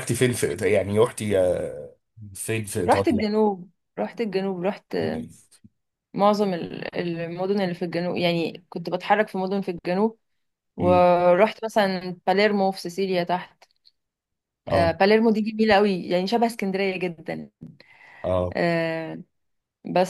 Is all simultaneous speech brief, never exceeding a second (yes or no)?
yes